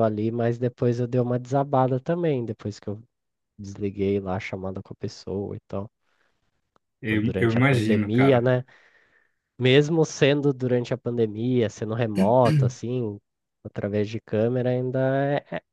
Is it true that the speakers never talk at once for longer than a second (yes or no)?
no